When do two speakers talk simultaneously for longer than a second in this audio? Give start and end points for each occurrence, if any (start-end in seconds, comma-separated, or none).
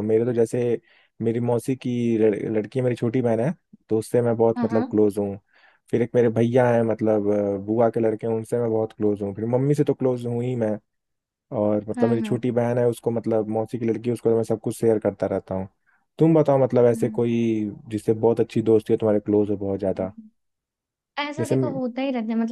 none